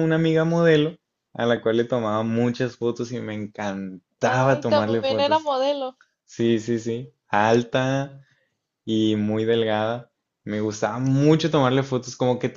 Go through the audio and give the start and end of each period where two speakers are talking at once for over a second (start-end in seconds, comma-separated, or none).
4.2-5.5